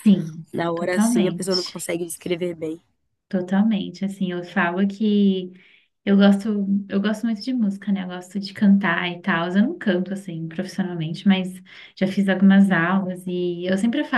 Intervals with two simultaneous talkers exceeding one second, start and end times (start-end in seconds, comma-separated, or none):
0.5-1.8